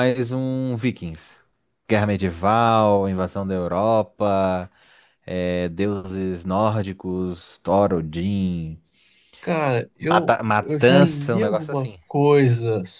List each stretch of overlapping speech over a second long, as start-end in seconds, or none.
10.0-12.0